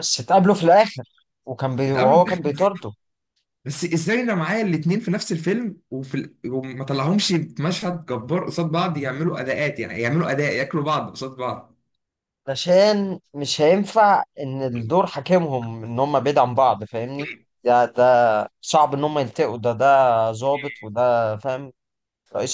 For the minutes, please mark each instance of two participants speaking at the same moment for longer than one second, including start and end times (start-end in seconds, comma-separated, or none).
none